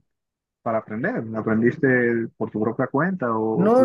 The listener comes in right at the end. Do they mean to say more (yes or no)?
yes